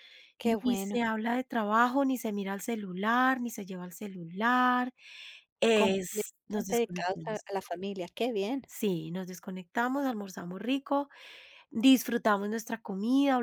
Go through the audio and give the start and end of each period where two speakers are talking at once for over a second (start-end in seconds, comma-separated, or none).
5.7-7.4